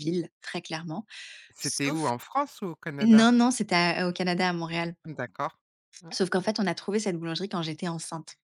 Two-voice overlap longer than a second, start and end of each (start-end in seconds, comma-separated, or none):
none